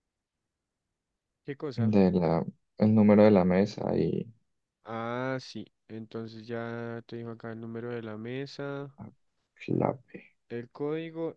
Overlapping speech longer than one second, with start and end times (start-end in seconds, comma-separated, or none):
none